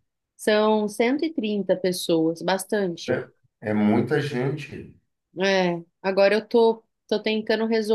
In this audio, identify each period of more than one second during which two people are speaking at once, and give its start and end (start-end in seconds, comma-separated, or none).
none